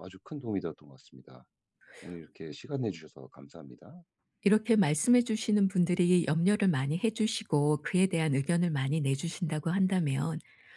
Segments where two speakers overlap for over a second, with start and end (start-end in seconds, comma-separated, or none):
none